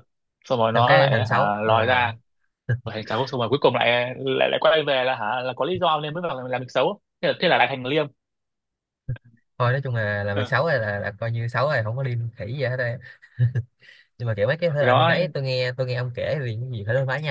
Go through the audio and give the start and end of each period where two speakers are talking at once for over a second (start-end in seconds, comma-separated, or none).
0.7-2.0